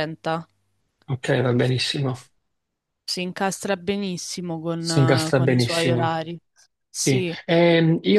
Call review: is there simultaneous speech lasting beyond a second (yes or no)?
yes